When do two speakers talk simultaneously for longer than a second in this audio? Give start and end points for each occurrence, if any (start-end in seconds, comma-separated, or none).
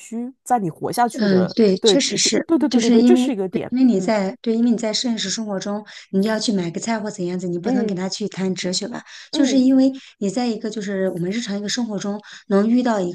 1.1-4.1